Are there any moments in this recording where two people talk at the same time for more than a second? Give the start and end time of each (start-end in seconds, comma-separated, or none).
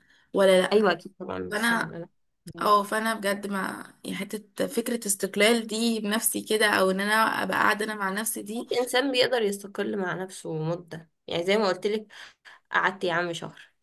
none